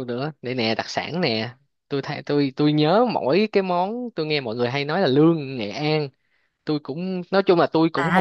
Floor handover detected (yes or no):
yes